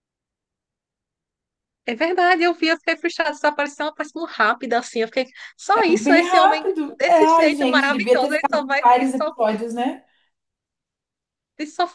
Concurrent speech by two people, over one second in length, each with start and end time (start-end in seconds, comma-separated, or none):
5.7-9.3